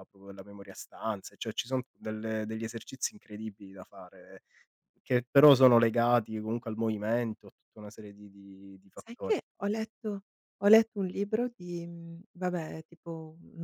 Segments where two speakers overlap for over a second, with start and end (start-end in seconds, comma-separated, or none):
none